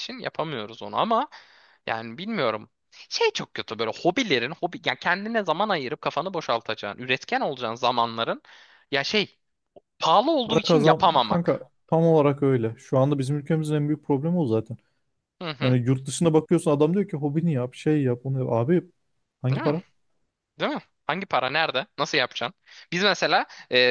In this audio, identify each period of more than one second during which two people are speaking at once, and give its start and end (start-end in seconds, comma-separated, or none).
10.4-11.7